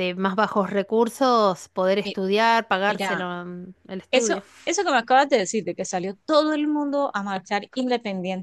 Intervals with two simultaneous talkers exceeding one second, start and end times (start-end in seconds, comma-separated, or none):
none